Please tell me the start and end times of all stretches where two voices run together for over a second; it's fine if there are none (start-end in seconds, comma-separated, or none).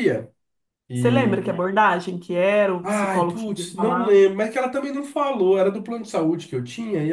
2.8-4.3